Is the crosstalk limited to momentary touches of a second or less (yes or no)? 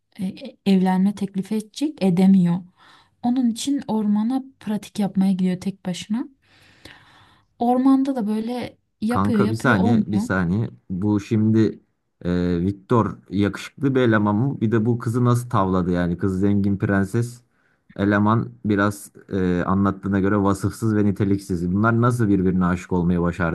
no